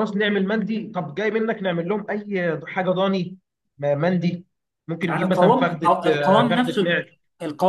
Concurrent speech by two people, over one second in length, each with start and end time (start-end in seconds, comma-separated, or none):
5.1-7.0